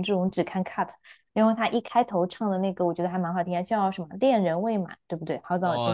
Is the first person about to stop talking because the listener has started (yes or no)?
yes